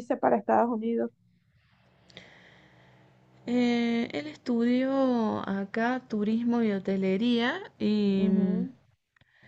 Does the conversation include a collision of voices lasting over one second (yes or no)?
no